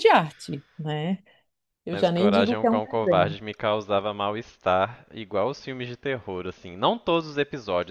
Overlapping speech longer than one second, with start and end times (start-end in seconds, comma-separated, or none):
1.9-3.4